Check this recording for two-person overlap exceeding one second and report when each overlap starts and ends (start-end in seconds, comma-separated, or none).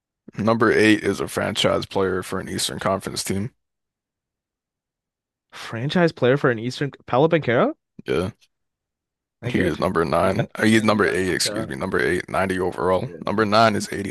9.5-11.7